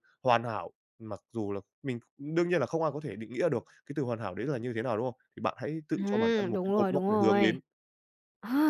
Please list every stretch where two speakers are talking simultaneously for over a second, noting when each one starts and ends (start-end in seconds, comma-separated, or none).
6.0-7.6